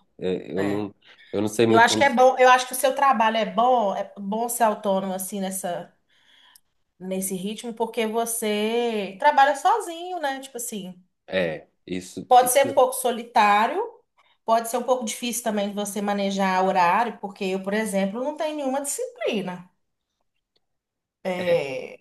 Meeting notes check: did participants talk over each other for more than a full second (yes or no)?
no